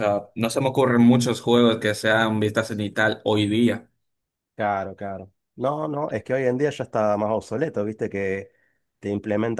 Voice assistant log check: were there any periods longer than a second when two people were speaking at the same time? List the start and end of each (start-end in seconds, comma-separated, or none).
none